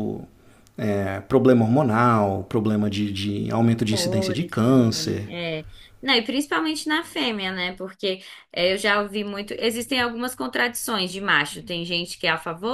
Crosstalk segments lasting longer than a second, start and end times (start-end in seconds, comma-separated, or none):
3.9-5.3